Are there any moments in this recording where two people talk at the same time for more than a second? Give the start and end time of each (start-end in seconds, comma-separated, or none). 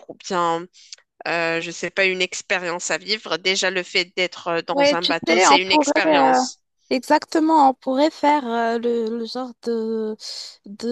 4.7-6.4